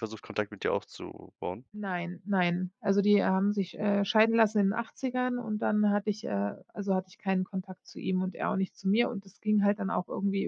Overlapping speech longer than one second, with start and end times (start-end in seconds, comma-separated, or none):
none